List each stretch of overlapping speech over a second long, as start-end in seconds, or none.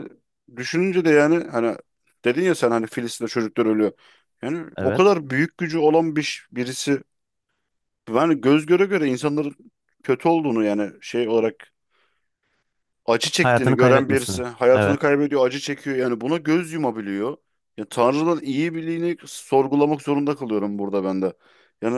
13.4-15.0